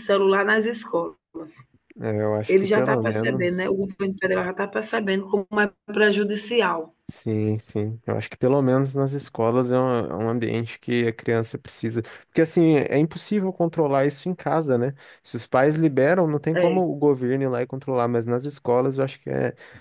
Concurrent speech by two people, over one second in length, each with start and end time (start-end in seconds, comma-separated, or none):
2.5-3.7